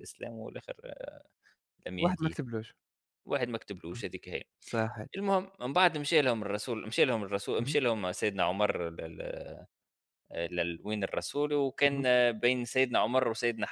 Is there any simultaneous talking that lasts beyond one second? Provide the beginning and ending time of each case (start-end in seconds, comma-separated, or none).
none